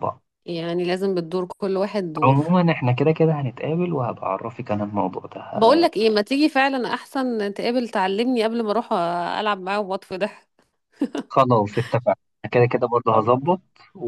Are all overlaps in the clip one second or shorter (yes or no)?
yes